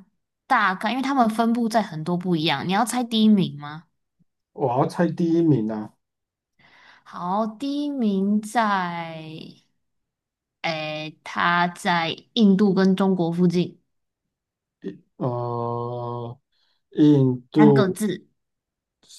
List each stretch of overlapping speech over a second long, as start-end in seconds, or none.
none